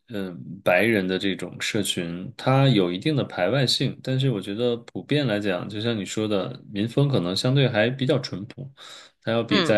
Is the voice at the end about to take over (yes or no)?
no